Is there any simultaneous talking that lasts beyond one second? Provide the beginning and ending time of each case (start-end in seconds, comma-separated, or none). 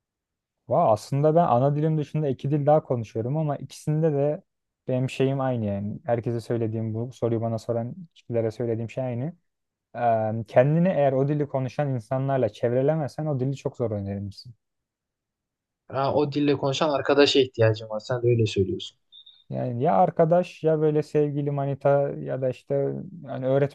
none